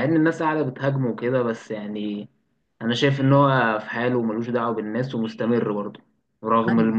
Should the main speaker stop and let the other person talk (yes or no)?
no